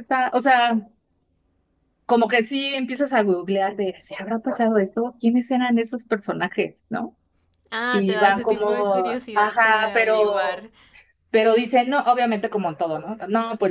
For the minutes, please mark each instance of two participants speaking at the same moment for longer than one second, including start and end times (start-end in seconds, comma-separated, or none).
7.9-10.7